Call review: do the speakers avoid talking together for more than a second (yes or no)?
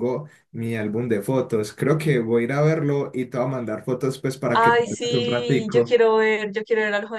no